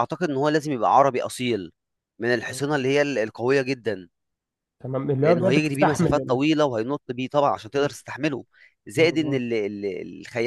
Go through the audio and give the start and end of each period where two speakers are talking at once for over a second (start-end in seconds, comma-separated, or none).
5.2-6.4